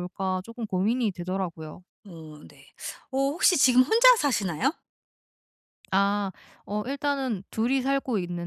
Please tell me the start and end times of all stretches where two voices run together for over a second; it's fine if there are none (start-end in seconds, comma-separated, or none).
none